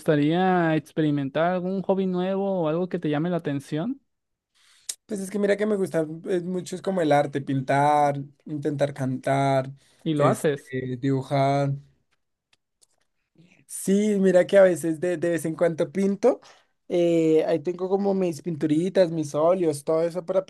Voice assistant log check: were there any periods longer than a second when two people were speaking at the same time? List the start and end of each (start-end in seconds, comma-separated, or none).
none